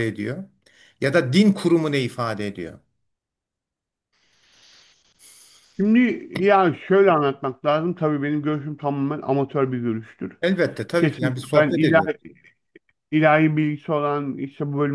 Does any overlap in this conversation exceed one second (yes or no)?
yes